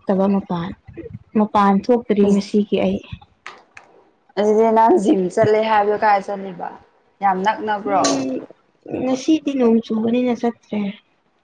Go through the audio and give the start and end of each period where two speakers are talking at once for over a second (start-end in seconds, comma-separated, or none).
none